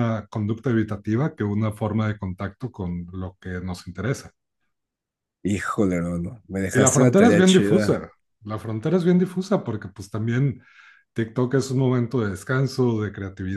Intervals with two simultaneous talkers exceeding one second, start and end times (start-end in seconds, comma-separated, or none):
6.7-8.0